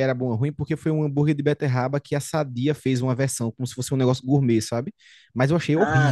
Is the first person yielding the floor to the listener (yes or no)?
yes